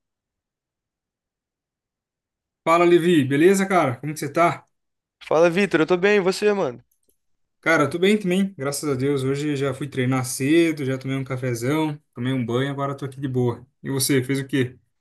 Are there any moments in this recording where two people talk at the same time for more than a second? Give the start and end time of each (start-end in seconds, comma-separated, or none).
none